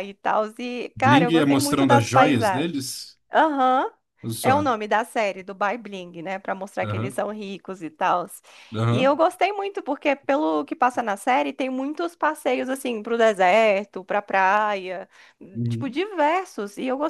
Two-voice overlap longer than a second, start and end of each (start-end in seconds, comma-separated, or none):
0.9-2.8